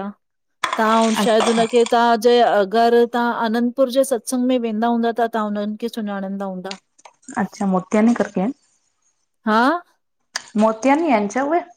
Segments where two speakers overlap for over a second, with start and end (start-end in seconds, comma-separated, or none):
none